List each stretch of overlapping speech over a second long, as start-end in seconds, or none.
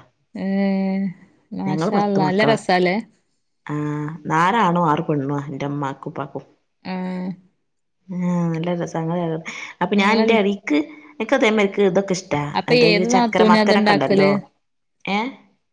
12.6-14.3